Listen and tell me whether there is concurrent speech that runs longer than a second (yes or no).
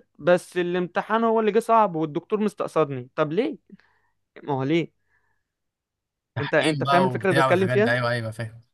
yes